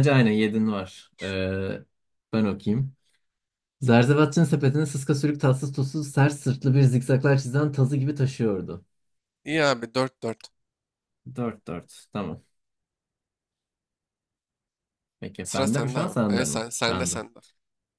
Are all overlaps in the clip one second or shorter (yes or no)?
no